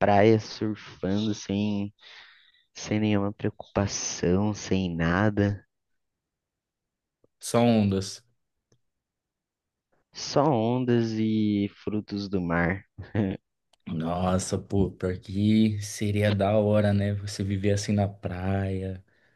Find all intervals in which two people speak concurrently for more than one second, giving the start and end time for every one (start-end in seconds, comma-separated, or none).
none